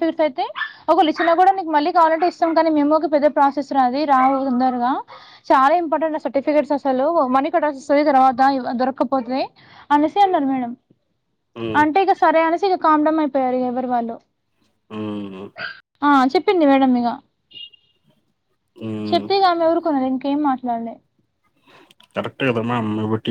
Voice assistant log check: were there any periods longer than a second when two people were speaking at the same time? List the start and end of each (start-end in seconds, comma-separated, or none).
none